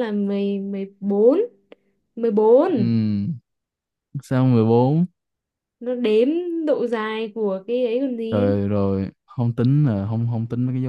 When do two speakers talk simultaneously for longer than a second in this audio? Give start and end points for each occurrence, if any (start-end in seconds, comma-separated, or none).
none